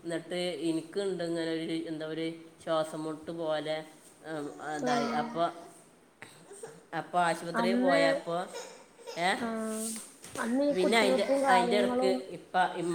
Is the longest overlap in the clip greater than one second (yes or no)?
yes